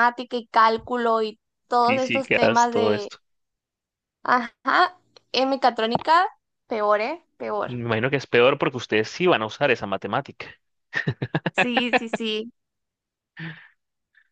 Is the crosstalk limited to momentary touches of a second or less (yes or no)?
no